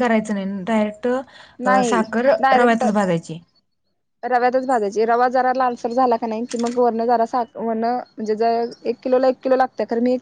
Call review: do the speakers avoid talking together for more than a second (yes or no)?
yes